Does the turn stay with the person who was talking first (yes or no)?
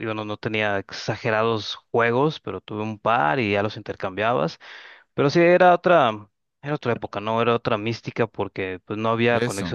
yes